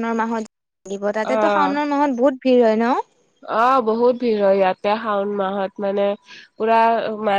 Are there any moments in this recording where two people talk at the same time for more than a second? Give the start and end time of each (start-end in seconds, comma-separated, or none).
none